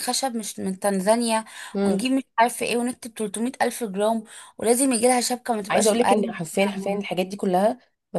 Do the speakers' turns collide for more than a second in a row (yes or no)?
yes